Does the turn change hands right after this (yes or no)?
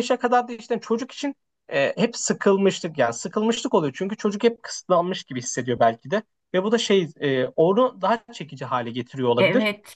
yes